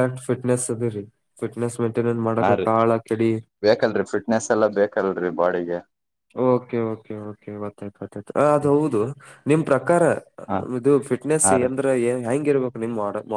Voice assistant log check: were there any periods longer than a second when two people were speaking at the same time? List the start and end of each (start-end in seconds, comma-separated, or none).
none